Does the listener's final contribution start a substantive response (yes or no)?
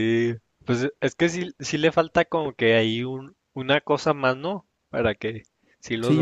yes